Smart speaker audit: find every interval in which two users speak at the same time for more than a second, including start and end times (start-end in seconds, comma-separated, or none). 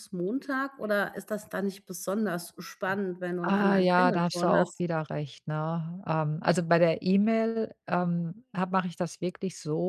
3.4-4.8